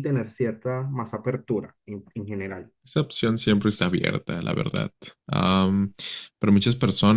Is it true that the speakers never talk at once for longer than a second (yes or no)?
yes